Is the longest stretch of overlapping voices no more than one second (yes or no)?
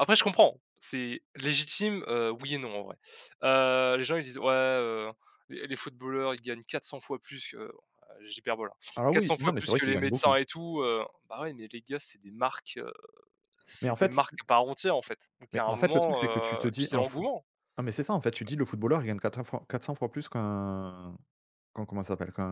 no